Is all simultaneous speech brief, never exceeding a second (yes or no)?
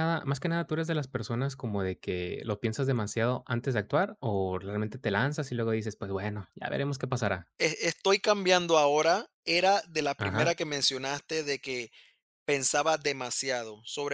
yes